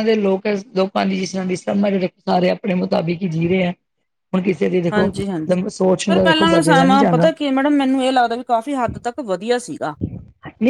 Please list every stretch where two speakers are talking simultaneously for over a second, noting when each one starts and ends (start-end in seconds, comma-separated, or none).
6.1-7.3